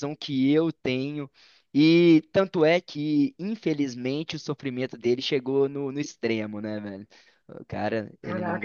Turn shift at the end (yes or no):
yes